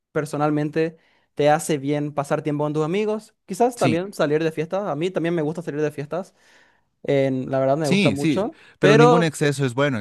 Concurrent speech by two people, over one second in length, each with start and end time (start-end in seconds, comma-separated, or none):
7.8-9.3